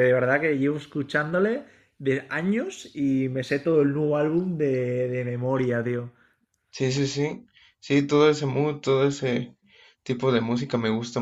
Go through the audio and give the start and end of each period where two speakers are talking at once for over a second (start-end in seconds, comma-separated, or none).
none